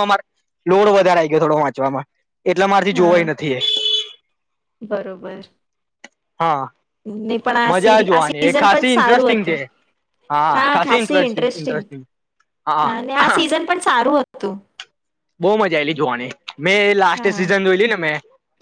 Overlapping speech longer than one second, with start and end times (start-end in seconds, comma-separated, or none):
7.7-9.6